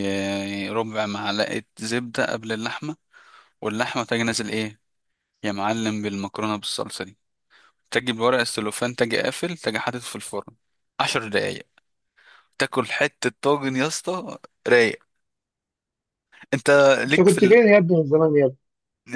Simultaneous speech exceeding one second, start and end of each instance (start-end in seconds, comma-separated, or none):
none